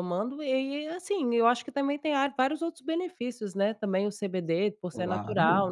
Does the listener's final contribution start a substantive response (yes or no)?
no